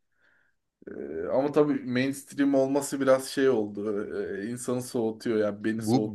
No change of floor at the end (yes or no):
no